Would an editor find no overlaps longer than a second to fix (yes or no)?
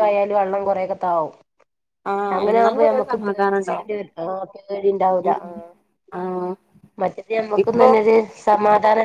no